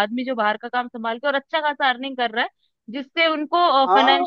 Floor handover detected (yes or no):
no